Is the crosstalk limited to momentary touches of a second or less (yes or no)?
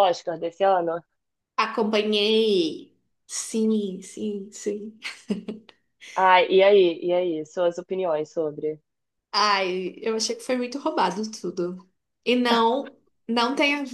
yes